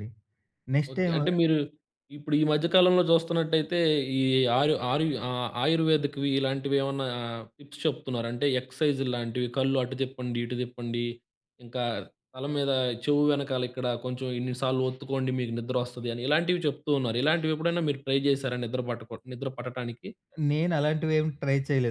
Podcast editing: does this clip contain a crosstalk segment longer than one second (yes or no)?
no